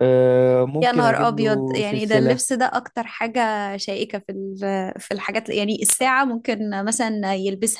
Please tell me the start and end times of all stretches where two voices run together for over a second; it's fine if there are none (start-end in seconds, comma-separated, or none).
0.8-2.4